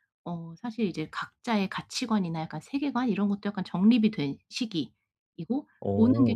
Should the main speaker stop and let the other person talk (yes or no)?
no